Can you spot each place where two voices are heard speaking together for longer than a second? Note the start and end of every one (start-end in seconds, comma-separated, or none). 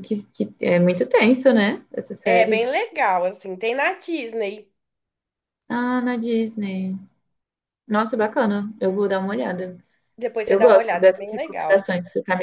10.4-11.9